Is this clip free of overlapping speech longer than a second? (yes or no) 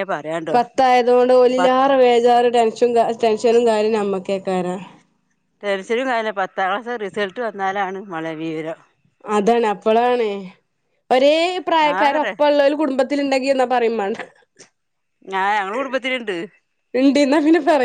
yes